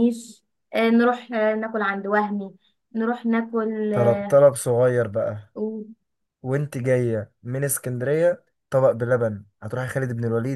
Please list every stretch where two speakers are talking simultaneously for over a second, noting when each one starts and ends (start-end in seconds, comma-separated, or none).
none